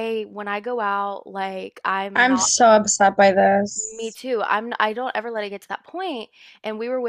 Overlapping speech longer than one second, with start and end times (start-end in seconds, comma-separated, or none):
none